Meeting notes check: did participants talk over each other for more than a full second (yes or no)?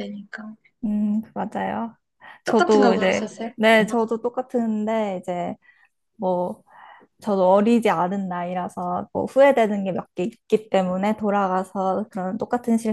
yes